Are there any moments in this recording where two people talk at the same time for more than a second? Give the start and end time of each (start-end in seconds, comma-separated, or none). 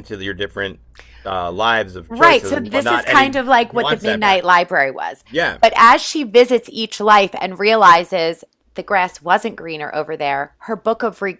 2.1-4.4